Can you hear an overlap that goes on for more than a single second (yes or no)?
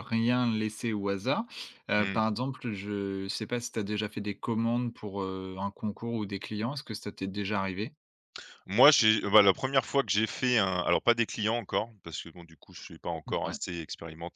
no